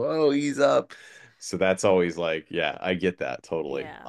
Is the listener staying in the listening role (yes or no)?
no